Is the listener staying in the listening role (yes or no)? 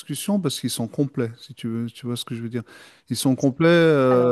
yes